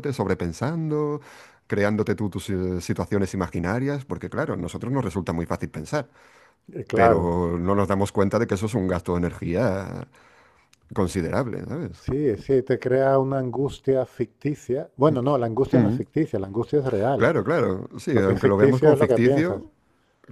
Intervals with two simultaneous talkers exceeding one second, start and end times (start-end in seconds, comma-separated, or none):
18.1-19.6